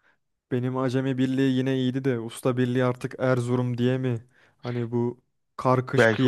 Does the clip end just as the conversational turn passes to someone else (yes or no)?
no